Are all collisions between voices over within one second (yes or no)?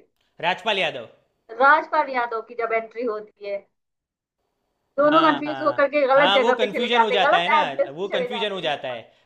no